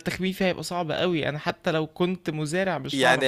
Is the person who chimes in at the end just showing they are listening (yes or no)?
no